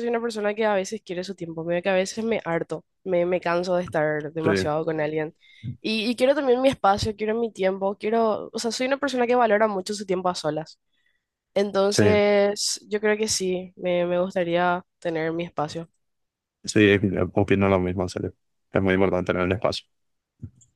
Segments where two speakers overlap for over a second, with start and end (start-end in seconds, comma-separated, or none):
none